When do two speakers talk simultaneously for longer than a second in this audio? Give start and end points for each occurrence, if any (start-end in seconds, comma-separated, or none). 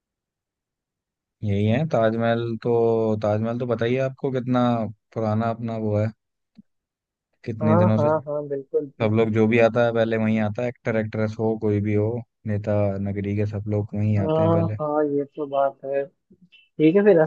none